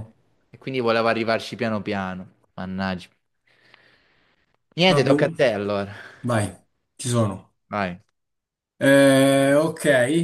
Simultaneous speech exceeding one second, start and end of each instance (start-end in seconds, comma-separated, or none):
none